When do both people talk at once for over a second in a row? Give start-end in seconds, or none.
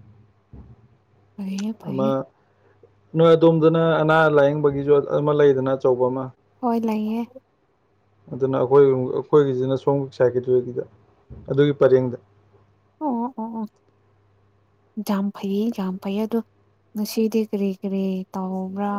none